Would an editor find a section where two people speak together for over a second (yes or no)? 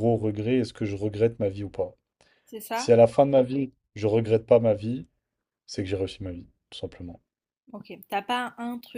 no